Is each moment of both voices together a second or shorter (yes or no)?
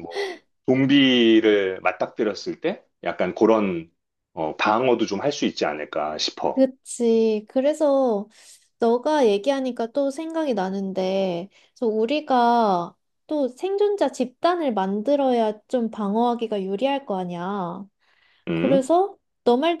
yes